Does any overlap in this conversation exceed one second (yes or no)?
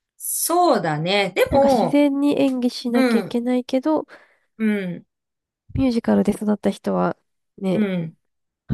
no